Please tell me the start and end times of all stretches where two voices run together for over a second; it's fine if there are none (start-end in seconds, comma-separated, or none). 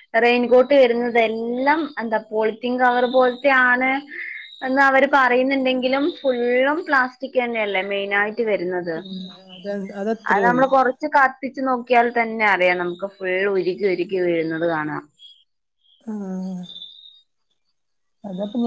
none